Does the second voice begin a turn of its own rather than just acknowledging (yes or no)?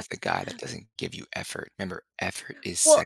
yes